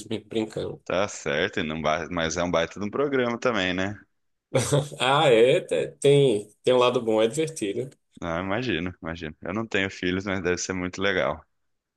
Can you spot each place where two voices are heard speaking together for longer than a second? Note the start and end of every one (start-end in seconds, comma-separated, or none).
none